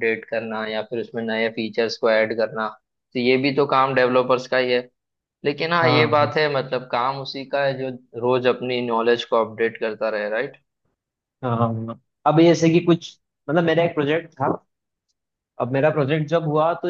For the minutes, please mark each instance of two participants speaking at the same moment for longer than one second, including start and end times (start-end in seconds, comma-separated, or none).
none